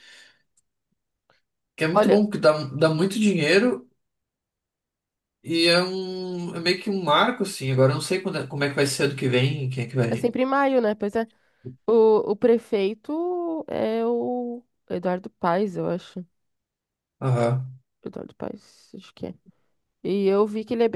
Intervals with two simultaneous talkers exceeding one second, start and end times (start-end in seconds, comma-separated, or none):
none